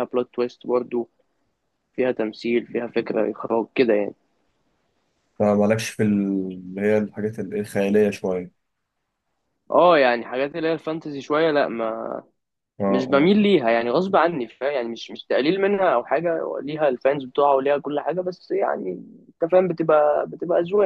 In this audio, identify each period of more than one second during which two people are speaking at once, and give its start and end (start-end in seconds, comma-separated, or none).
none